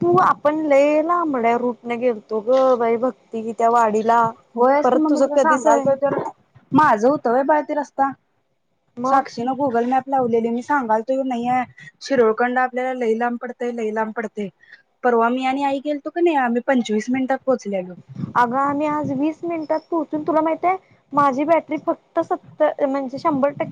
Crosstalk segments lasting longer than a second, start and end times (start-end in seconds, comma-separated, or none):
none